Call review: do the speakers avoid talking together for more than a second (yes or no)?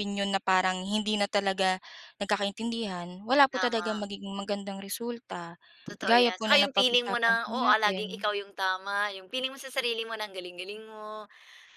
no